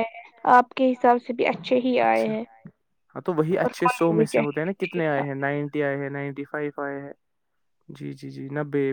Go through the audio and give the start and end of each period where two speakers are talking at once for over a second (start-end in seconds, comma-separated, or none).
3.5-5.2